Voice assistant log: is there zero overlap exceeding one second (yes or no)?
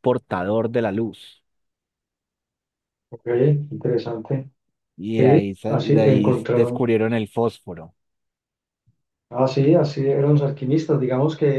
no